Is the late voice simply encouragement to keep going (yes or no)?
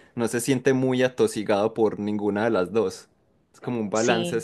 yes